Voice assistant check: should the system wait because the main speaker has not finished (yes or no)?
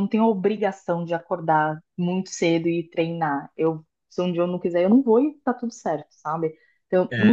no